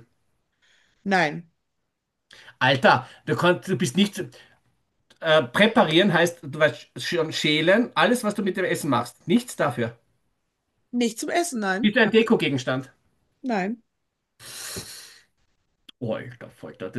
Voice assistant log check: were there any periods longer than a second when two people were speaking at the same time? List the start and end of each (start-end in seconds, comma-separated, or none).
none